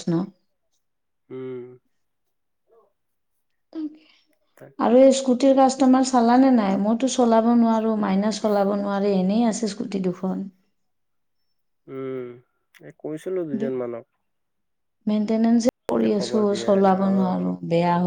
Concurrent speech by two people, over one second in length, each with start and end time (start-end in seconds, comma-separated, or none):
15.9-17.5